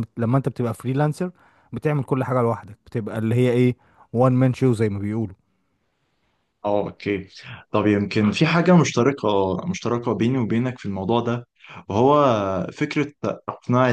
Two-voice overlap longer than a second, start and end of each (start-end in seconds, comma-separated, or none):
none